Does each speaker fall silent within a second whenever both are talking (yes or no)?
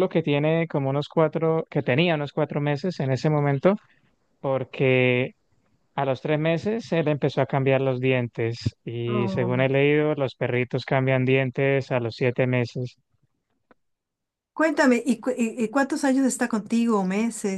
yes